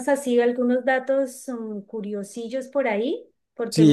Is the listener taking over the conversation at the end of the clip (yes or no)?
yes